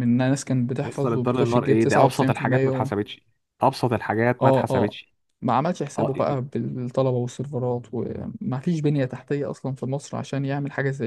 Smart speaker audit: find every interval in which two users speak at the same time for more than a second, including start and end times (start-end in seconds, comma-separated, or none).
0.8-2.9